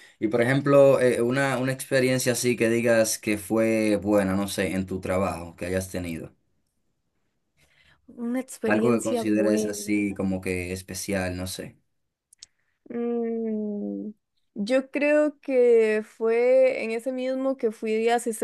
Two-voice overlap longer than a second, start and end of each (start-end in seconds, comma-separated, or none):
8.7-10.1